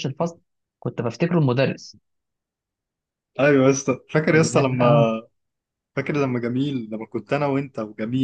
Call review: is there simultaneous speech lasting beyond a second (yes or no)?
no